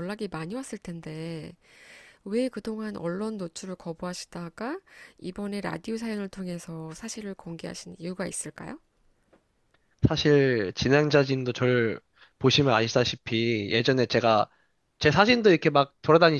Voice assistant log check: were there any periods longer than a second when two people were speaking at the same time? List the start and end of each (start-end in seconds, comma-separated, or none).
none